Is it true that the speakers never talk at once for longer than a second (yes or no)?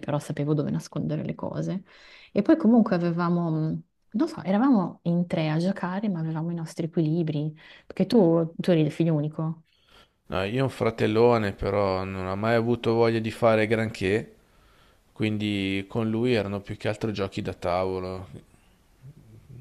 yes